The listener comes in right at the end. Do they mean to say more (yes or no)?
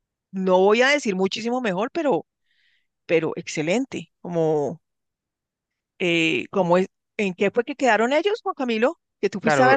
yes